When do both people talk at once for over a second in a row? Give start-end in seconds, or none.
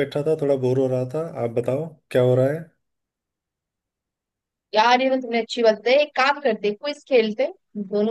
none